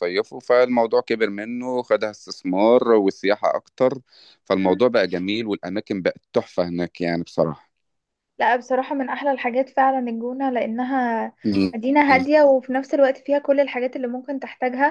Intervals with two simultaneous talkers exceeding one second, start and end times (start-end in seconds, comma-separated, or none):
none